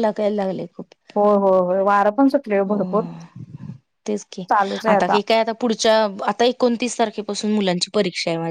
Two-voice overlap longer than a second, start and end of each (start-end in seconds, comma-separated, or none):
none